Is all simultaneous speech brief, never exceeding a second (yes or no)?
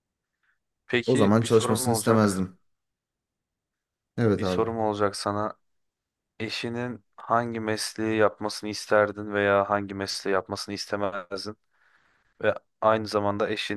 no